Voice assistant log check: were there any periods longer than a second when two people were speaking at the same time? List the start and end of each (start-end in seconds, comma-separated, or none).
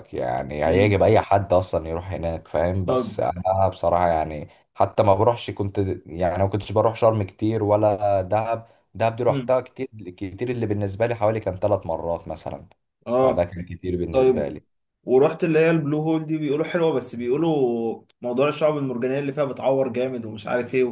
none